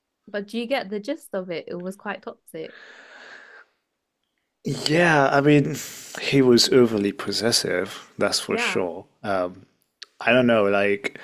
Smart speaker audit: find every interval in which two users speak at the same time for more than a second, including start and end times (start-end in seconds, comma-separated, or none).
none